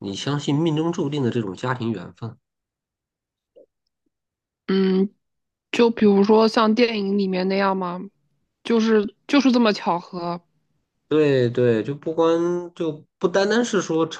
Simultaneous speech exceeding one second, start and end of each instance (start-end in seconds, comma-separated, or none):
none